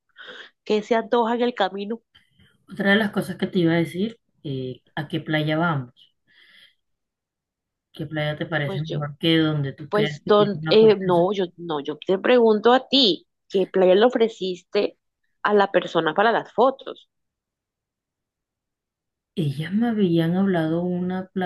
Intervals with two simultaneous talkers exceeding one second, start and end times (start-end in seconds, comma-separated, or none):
9.9-11.3